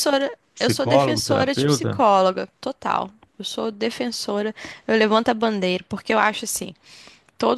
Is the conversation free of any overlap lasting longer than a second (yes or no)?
no